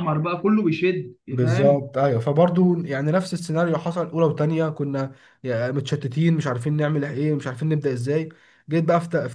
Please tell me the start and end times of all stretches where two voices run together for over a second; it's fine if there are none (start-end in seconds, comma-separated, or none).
none